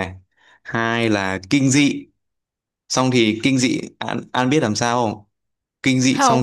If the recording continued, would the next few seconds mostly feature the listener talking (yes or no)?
no